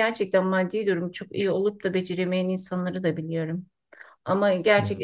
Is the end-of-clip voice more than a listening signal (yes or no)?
no